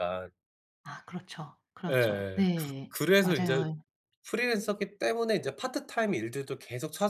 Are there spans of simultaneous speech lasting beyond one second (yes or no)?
yes